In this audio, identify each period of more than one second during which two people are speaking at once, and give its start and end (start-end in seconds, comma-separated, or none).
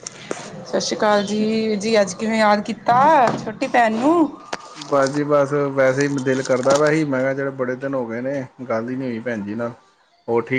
none